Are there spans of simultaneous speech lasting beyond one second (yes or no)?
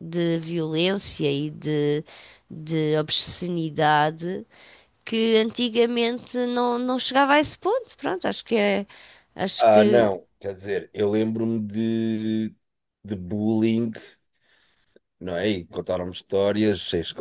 no